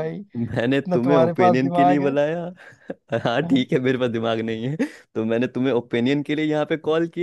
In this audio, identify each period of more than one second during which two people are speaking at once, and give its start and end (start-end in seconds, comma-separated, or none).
0.9-2.1